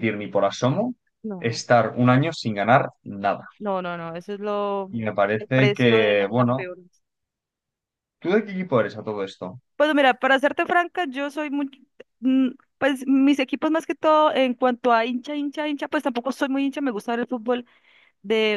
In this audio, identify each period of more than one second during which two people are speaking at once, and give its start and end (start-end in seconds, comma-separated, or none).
5.4-6.7